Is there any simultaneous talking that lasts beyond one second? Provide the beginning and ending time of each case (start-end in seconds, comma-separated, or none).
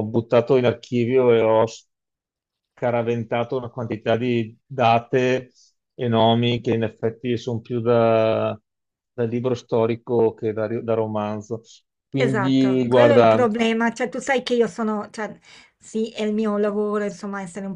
12.2-13.5